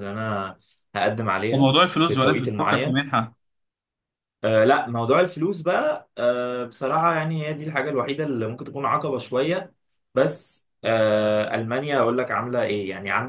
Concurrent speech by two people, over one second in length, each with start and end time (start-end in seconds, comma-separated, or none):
1.5-3.0